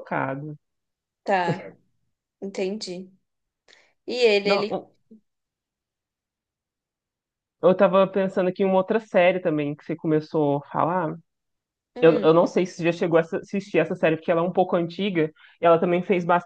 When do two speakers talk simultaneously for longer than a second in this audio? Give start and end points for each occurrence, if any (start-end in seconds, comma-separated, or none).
none